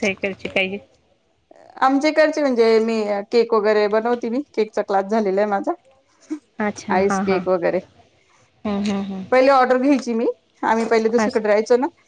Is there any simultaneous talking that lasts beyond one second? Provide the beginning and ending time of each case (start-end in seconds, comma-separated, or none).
none